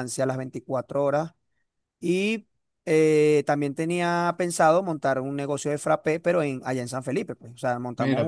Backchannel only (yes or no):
no